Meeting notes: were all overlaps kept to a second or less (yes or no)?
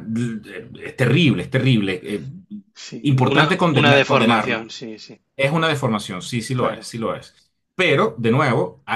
no